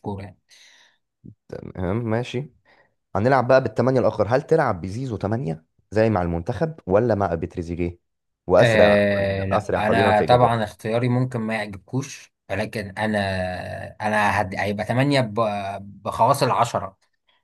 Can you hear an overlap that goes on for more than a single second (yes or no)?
yes